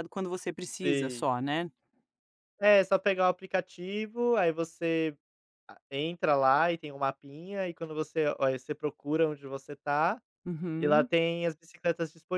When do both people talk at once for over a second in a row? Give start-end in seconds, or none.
none